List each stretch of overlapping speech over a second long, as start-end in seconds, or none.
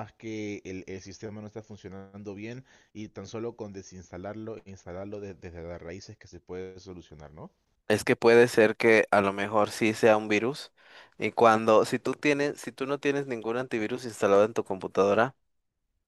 none